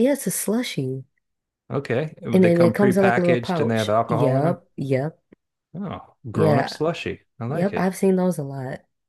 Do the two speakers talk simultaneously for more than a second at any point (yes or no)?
yes